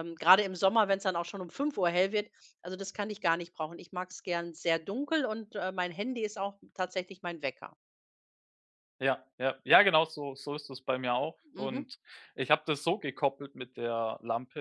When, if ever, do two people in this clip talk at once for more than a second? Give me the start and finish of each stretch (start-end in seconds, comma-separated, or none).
none